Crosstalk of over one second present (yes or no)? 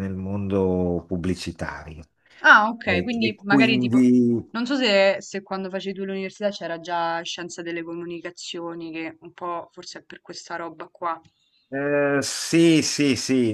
yes